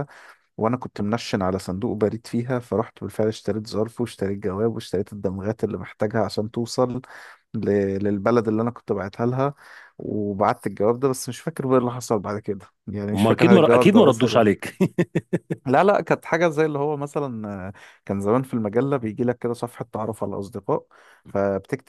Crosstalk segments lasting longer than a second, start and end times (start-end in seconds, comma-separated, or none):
13.1-14.4